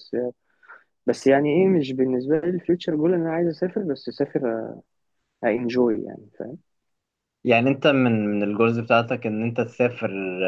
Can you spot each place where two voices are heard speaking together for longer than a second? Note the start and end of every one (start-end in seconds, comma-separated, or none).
none